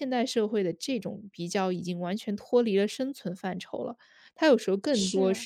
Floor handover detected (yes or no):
no